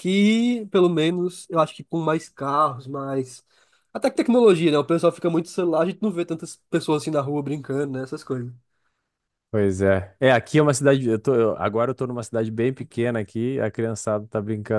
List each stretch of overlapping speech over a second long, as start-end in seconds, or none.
none